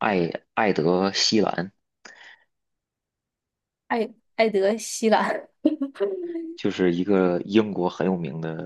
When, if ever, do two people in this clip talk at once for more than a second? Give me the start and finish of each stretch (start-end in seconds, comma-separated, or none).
none